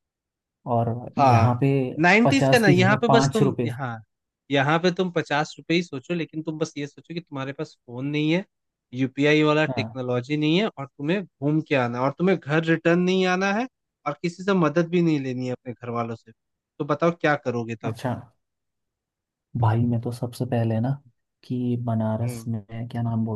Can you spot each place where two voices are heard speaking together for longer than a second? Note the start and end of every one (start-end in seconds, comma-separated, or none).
2.2-3.7